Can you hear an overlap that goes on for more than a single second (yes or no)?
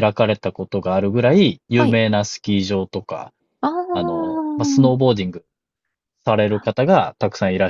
yes